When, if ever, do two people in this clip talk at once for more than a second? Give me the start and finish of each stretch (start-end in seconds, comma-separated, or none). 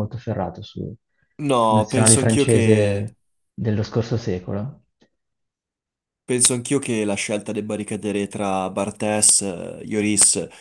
1.5-3.0